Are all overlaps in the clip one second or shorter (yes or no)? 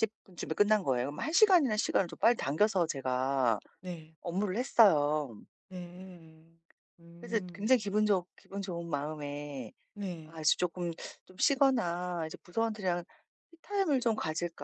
yes